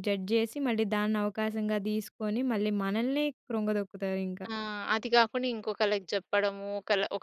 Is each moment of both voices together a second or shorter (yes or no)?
yes